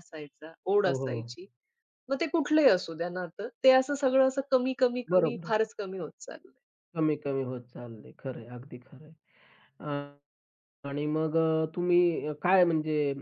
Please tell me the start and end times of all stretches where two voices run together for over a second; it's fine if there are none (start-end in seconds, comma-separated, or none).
none